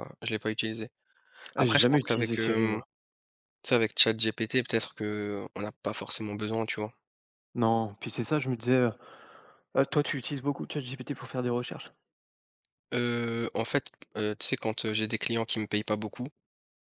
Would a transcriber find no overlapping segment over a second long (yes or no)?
no